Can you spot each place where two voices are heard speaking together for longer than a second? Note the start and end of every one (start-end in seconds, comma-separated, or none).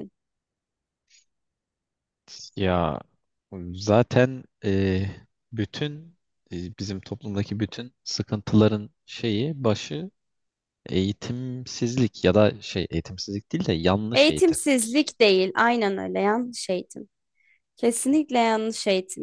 none